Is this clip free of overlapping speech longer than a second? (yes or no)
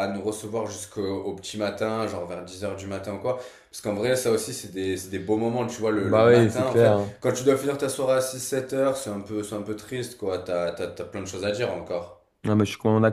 no